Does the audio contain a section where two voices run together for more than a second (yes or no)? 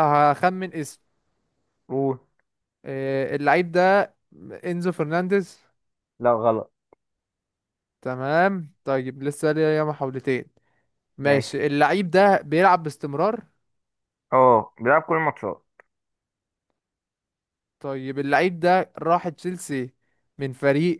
no